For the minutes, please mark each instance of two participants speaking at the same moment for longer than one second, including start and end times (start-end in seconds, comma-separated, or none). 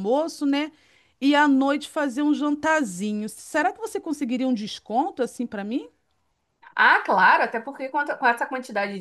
none